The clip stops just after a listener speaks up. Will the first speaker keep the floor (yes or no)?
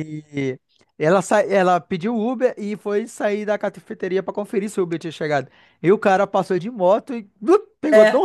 yes